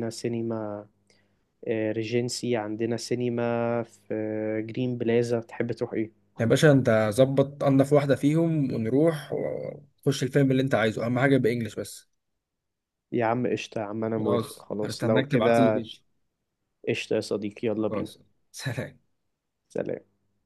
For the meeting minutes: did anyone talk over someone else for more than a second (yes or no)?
yes